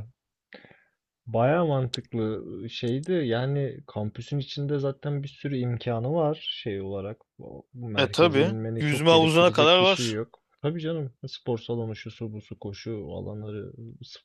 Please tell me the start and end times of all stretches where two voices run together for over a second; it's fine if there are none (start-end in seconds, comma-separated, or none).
8.0-10.2